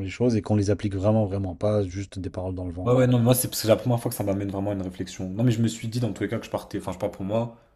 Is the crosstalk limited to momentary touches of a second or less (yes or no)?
yes